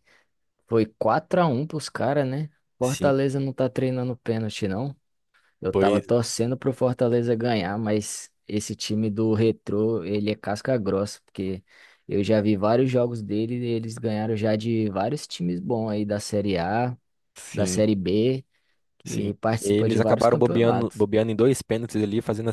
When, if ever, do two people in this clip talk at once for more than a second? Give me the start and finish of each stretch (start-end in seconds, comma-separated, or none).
19.0-21.1